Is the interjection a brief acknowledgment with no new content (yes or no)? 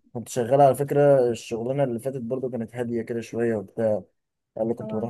yes